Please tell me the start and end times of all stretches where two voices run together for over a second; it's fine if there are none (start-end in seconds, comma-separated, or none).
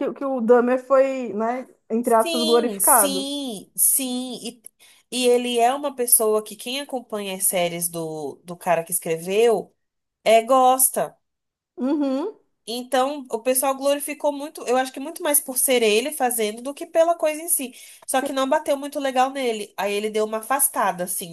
2.0-3.3